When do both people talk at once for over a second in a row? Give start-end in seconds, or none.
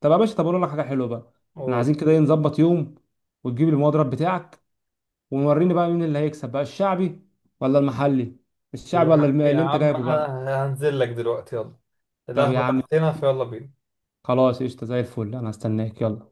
8.9-10.3